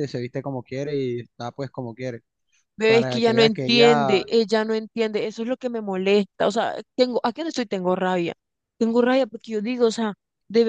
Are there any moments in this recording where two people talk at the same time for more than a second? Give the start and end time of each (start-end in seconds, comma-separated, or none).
2.8-4.3